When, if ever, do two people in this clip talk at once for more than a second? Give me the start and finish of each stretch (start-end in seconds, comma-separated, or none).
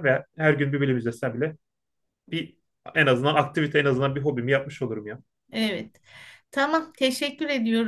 none